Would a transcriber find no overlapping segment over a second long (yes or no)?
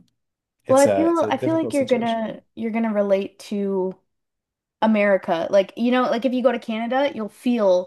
no